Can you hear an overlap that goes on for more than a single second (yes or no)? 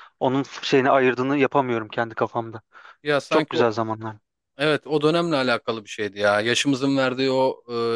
no